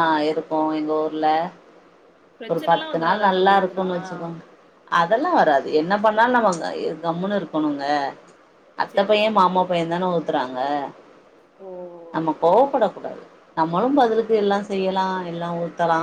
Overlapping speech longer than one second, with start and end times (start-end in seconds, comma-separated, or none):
2.5-3.9